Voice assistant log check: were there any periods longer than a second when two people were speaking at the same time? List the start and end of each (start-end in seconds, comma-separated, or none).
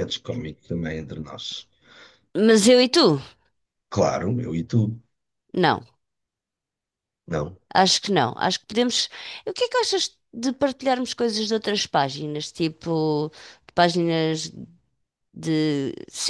none